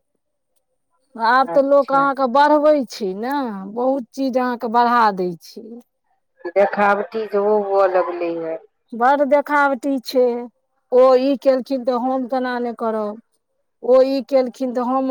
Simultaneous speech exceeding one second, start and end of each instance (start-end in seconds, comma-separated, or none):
none